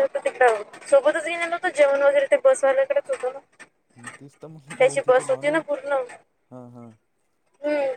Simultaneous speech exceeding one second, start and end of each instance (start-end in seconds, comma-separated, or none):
none